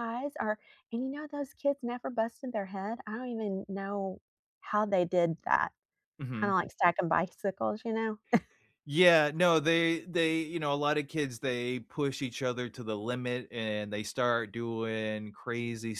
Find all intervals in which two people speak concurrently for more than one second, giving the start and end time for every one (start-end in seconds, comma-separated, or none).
none